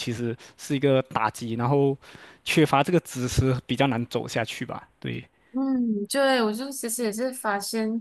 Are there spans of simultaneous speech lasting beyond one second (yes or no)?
no